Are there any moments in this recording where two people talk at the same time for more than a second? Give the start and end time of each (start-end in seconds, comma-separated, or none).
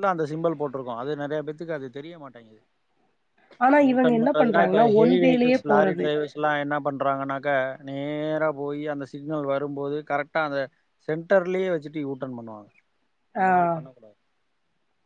3.9-6.1